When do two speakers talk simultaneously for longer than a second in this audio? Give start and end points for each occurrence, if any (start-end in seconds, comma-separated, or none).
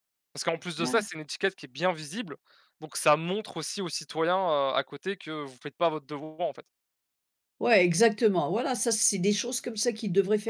none